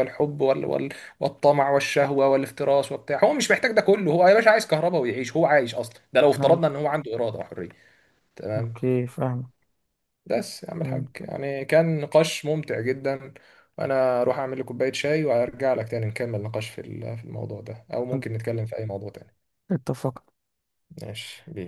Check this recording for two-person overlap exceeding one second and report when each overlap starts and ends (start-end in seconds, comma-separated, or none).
none